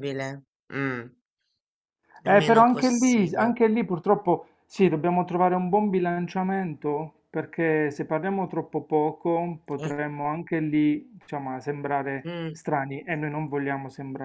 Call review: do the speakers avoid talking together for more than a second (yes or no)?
no